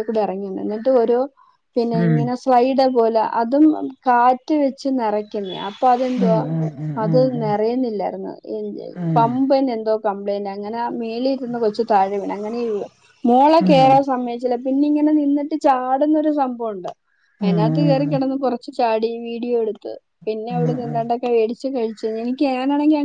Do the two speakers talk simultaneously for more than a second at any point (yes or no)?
no